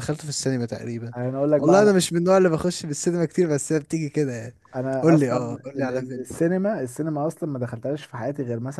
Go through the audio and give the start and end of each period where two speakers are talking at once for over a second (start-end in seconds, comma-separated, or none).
5.0-6.3